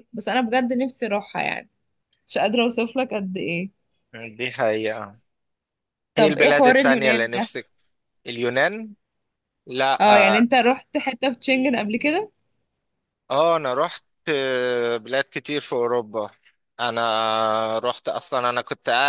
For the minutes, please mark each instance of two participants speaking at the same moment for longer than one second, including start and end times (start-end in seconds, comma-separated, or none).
6.2-7.5